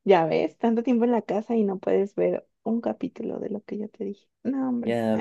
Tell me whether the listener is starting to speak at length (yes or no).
yes